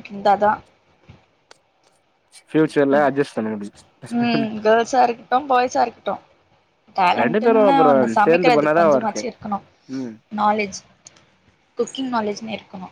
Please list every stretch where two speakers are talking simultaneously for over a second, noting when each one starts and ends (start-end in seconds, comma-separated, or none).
7.2-9.2